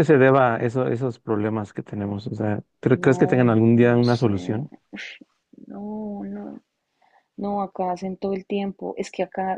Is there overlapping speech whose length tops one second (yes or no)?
yes